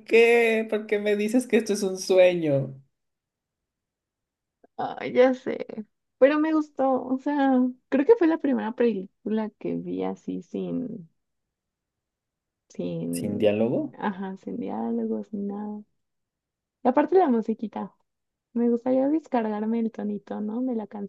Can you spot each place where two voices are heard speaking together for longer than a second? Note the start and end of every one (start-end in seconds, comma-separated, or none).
none